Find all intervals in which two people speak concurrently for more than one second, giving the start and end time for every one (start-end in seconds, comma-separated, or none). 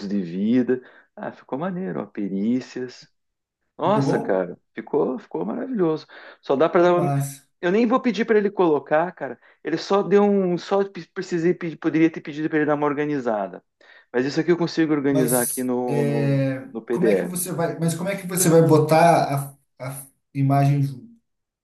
15.1-17.4